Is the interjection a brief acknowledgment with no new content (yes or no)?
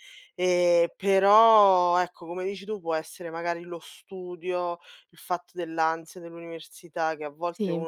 yes